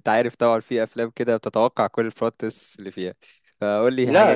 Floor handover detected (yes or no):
yes